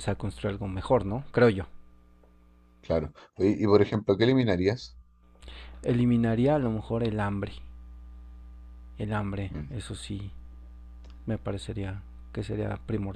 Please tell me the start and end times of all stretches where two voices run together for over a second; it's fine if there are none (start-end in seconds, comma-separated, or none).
none